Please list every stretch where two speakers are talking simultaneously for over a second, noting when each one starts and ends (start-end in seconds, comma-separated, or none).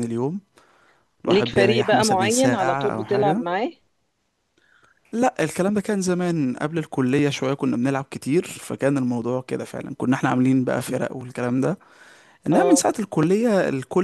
1.3-3.4